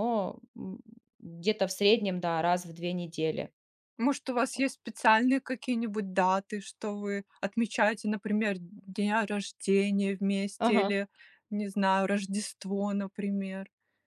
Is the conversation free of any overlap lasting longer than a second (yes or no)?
yes